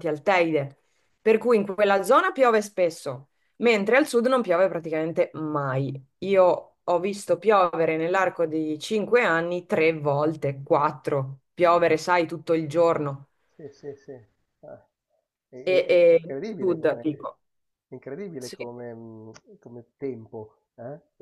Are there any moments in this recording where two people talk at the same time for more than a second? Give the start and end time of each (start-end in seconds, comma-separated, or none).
15.6-17.0